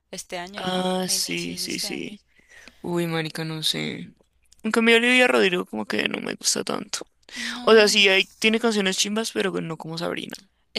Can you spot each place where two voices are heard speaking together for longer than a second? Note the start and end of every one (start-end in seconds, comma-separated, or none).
0.6-2.2